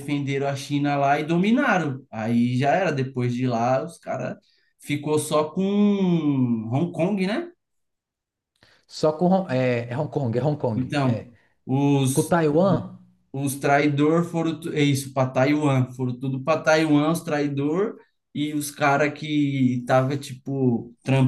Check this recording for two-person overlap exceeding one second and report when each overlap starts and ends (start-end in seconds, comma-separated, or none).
none